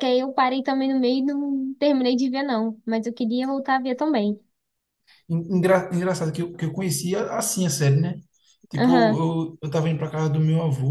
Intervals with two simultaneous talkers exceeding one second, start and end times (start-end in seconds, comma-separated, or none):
none